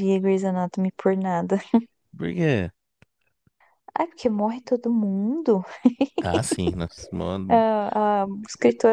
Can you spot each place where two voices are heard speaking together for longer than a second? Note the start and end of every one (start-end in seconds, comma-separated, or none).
none